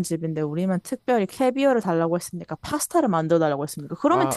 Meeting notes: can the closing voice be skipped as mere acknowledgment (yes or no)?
yes